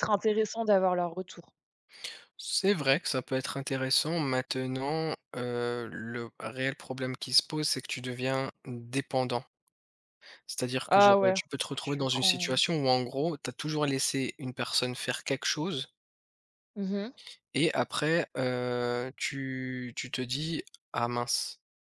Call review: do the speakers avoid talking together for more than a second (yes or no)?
no